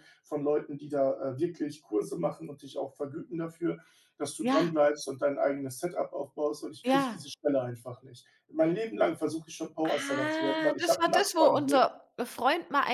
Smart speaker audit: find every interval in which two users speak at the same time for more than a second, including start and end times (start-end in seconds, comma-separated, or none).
9.8-11.9